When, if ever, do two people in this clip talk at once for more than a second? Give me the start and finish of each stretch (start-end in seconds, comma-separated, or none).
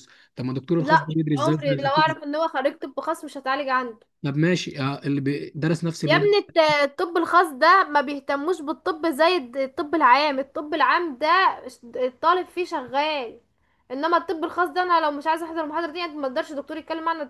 0.8-2.1